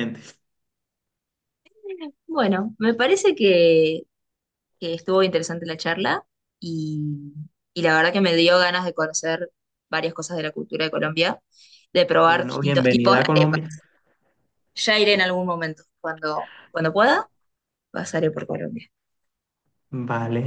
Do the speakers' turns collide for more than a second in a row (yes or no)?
yes